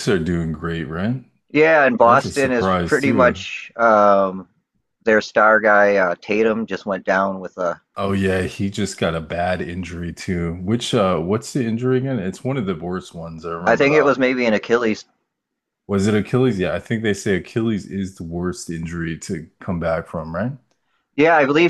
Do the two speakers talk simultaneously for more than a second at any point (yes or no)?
yes